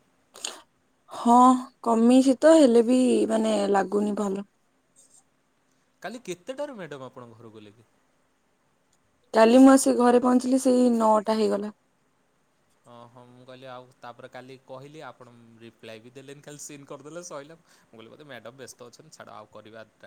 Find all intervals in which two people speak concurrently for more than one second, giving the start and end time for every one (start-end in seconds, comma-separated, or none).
none